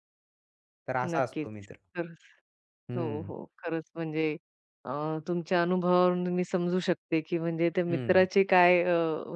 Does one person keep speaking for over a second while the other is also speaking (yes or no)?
no